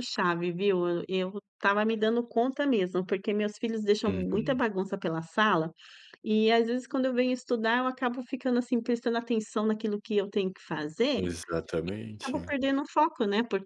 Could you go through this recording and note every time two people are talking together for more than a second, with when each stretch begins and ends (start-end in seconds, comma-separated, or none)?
none